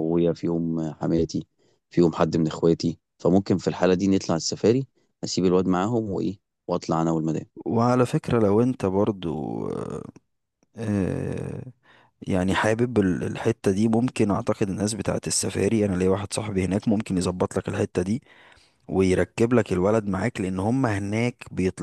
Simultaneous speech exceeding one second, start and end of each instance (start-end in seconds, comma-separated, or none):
none